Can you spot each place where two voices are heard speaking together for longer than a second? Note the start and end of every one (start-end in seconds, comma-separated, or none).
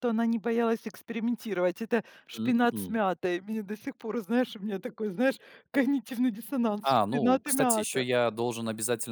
6.8-8.0